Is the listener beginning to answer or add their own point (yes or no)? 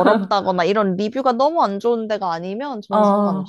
yes